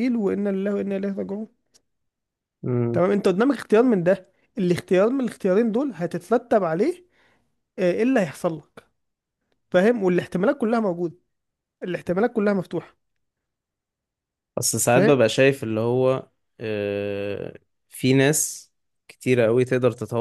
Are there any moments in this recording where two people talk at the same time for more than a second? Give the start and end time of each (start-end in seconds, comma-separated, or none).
none